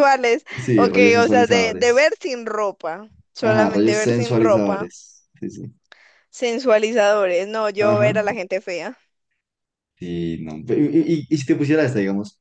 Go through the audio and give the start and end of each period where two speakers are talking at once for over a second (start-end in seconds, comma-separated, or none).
0.6-2.2, 3.4-4.9